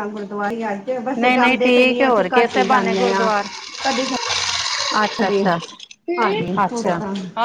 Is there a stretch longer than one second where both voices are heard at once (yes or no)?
yes